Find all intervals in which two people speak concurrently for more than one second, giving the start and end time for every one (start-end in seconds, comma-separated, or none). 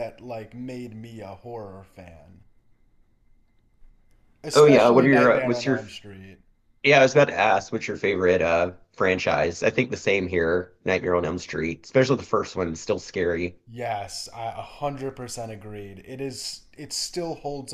4.5-5.8